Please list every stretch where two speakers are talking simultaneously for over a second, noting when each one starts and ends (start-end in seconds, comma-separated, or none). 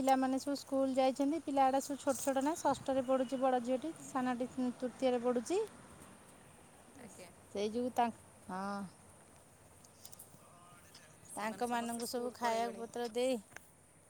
11.4-12.8